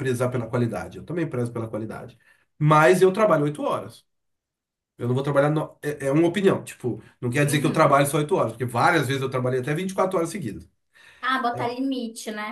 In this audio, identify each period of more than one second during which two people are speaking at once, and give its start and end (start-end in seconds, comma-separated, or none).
none